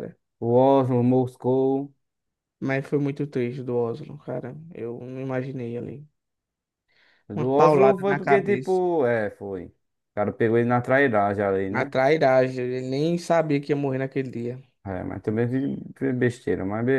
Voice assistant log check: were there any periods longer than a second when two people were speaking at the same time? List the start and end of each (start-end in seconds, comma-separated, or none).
7.3-8.8